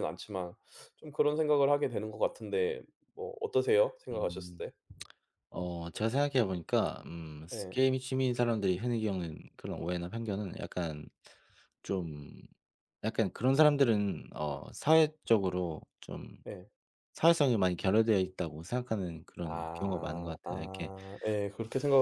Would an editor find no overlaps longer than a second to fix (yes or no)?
no